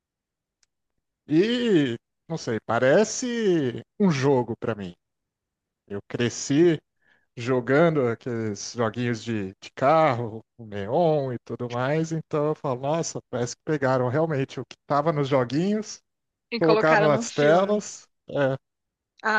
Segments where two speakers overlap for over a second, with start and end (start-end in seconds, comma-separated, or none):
16.6-17.9